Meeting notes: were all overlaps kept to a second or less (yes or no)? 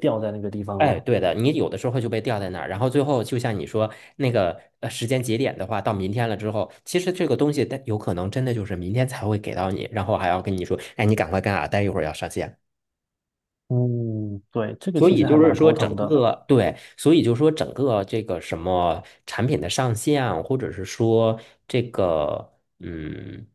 no